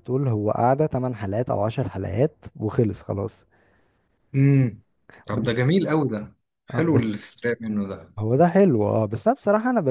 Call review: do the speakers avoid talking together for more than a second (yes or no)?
yes